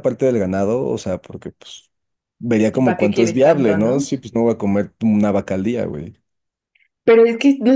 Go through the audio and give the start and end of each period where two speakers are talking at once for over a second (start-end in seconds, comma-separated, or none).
2.7-4.1